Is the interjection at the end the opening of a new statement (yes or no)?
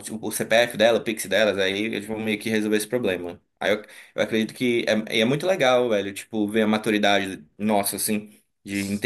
no